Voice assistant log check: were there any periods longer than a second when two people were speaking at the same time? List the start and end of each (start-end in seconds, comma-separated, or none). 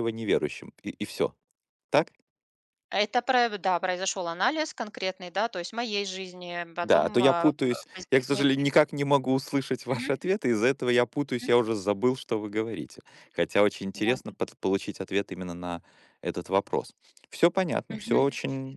6.8-8.5